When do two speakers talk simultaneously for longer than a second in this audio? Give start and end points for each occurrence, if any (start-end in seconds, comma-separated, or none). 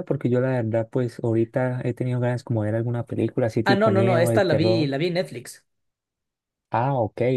3.6-4.9